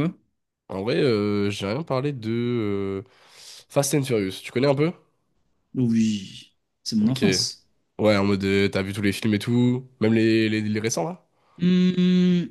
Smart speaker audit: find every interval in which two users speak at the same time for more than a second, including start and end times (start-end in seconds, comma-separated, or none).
none